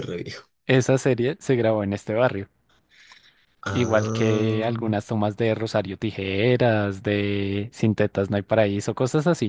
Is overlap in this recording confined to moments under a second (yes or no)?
no